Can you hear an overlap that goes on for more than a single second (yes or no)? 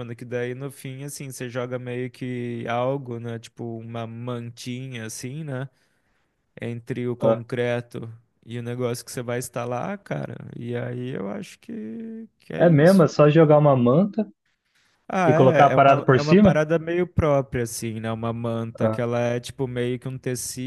yes